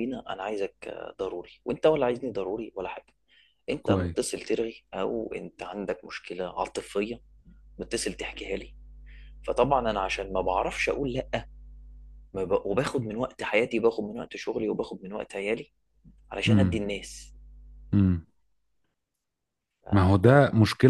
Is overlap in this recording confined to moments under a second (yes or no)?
yes